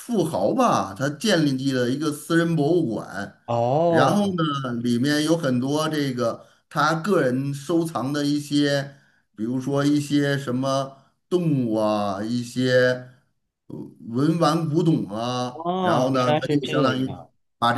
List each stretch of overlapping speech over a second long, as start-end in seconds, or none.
15.5-17.1